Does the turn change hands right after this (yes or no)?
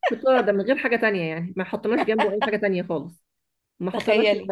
no